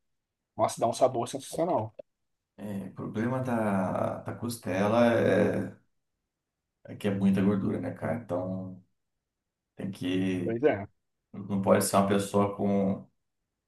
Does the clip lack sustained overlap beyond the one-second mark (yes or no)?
yes